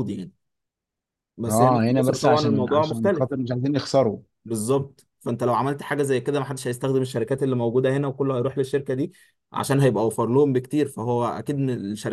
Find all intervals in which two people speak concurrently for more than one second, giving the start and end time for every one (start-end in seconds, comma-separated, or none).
1.5-3.3